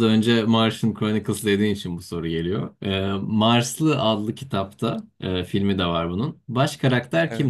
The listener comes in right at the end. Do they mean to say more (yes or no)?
no